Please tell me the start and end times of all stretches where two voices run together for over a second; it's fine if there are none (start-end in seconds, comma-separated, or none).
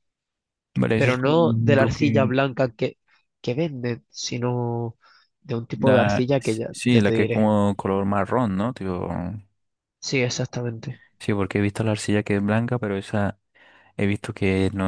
0.9-2.3, 5.7-7.5